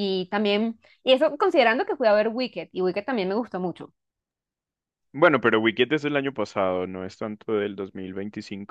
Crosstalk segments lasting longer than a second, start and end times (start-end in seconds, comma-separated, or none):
none